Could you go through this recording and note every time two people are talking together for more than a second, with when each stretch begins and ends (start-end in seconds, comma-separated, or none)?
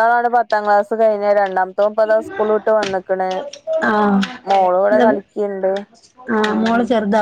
none